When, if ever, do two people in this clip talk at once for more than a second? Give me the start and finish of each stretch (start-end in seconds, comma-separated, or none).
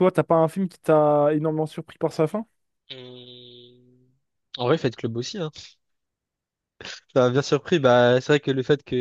none